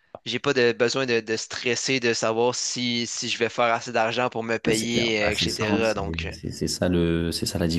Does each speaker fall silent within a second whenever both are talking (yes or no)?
no